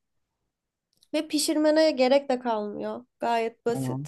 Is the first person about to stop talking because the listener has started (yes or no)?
yes